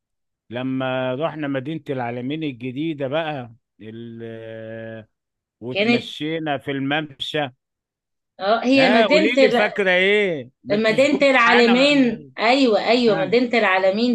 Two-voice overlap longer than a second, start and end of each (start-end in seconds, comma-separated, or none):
10.7-12.3